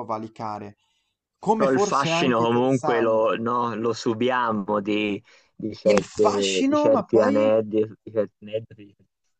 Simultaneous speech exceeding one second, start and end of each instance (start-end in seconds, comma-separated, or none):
1.5-3.2, 5.9-7.5